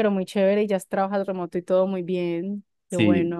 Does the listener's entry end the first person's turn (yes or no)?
yes